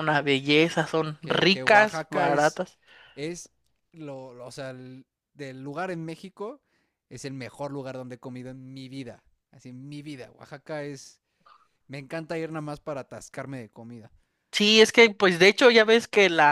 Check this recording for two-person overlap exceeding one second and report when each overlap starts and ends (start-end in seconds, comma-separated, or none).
1.2-2.6